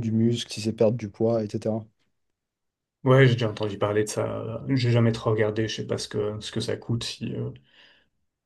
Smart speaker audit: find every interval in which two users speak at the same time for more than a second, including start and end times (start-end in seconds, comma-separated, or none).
none